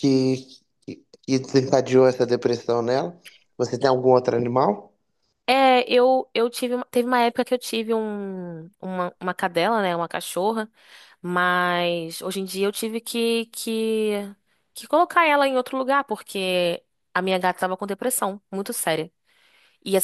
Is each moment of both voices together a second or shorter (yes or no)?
yes